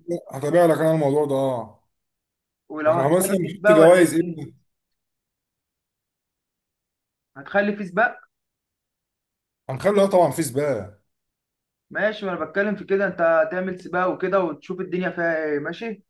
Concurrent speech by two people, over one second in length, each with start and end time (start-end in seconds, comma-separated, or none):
2.9-4.4